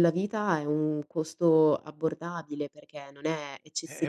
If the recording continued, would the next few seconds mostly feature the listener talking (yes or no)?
yes